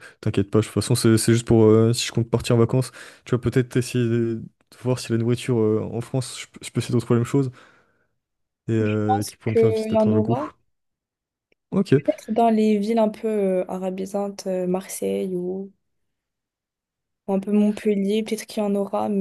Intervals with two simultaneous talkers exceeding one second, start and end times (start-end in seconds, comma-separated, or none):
9.1-10.5